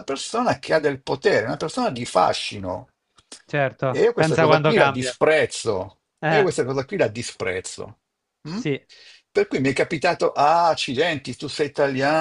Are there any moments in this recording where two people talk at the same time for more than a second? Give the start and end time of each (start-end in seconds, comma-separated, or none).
3.9-5.2